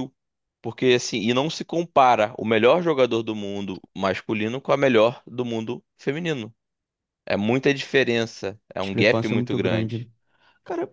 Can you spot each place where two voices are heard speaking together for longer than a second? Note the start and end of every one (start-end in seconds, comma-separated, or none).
8.8-10.1